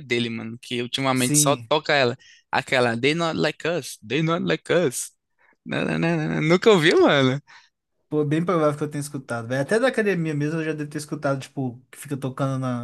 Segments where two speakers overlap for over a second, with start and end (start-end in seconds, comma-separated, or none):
none